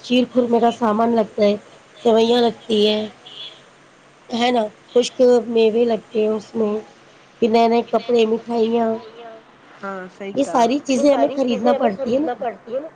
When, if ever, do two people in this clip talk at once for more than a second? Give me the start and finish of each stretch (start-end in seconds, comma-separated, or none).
10.9-12.4